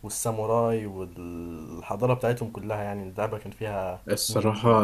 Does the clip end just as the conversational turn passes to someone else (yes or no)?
yes